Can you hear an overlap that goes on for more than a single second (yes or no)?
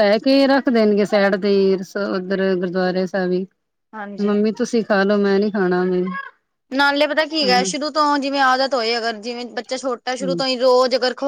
no